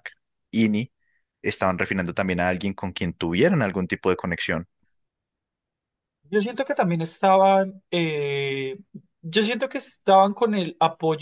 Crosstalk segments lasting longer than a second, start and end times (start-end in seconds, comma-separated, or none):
none